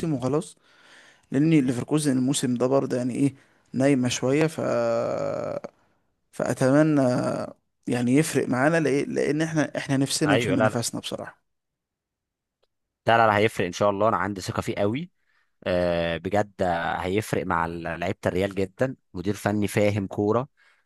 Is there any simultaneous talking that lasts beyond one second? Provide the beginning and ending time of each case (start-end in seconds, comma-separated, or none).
none